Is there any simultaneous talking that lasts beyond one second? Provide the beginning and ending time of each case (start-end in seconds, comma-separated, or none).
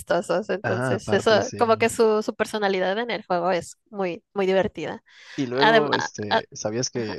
0.6-1.9